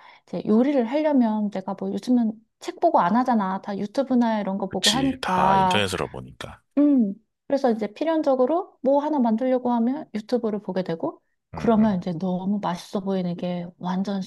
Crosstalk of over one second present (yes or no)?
yes